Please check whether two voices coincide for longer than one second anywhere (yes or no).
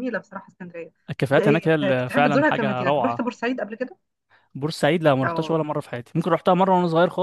yes